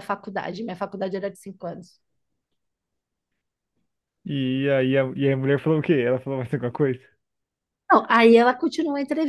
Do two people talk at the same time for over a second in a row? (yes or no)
no